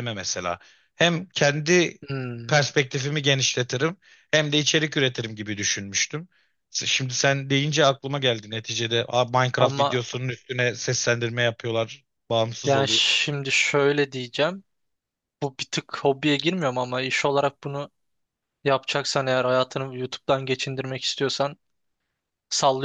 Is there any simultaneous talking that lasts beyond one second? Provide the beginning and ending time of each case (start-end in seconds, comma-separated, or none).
none